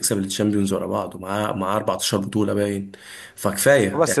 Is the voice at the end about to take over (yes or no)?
yes